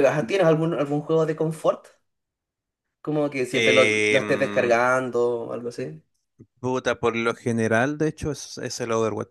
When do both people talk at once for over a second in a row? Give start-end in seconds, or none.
3.5-4.8